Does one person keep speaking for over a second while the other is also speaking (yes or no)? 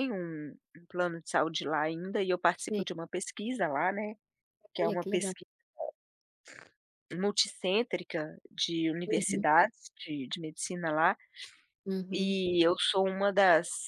no